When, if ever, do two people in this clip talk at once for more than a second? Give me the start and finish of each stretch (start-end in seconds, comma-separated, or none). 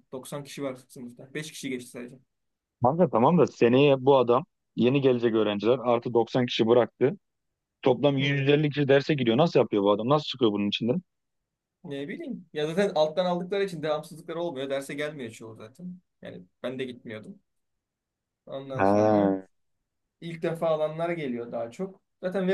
none